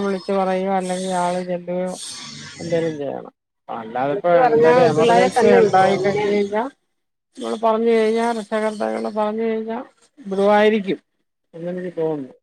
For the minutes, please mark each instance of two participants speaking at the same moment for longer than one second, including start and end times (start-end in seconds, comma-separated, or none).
4.1-6.2